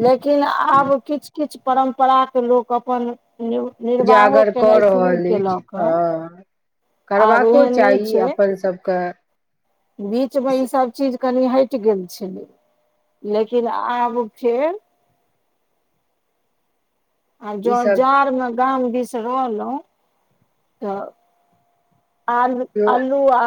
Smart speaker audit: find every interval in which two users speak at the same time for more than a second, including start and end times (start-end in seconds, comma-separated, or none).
4.0-5.9